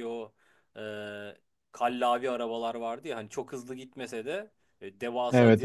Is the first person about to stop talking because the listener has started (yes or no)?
no